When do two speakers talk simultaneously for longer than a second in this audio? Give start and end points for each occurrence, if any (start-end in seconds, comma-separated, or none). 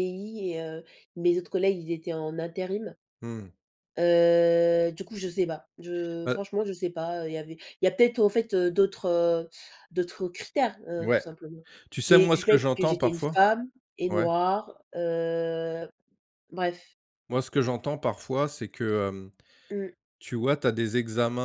12.1-13.4